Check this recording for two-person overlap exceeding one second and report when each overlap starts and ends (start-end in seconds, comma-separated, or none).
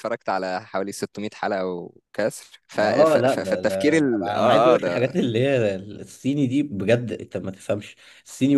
2.7-5.1